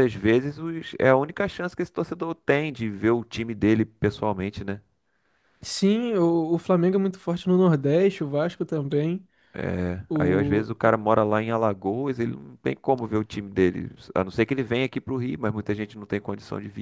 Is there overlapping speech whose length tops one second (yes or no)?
no